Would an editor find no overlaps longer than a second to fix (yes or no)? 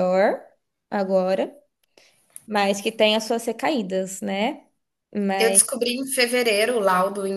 yes